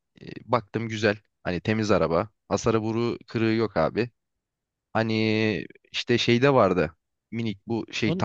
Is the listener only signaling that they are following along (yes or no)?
yes